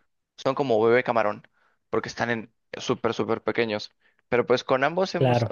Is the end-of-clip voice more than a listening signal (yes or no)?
no